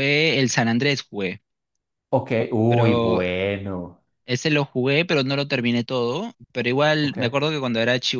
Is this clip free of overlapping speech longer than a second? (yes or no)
yes